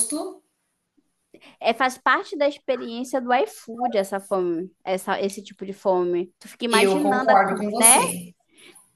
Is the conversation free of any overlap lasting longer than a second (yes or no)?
no